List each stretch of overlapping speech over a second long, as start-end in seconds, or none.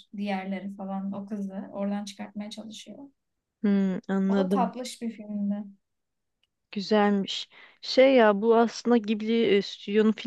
none